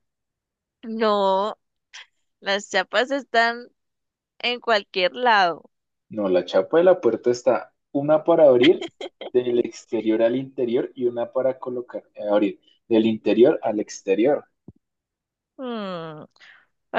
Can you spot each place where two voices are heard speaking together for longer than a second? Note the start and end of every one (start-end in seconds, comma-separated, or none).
none